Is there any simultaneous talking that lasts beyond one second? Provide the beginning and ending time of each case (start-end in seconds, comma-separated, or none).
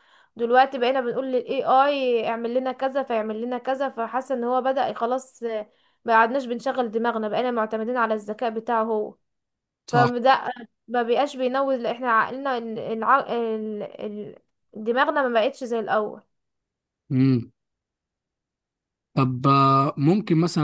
none